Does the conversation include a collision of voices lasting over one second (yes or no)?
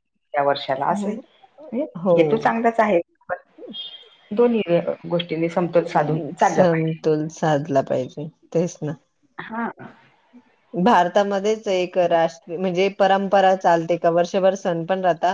no